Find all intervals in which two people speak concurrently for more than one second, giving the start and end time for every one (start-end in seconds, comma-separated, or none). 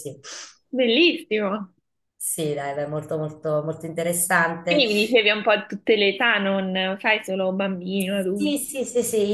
none